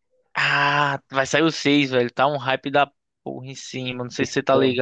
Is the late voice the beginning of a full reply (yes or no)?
yes